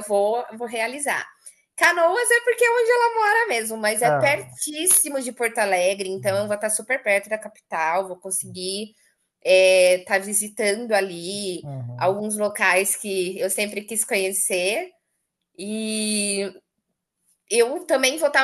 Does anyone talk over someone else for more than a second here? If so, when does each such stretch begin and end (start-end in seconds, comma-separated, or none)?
none